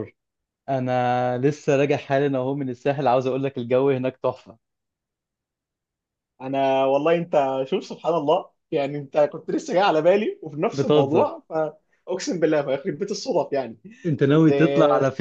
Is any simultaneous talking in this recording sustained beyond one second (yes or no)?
no